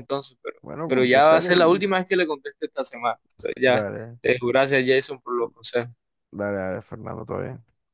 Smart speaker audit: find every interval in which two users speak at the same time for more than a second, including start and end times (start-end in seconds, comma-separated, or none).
0.6-1.9